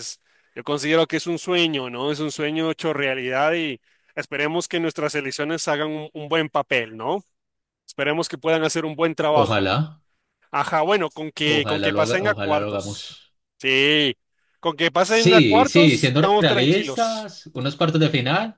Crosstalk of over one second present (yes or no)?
yes